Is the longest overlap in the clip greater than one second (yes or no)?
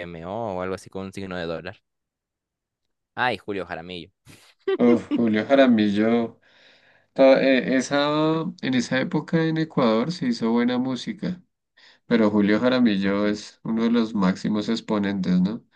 no